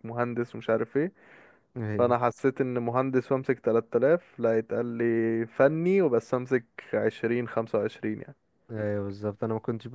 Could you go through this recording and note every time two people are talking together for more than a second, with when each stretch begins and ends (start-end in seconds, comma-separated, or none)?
none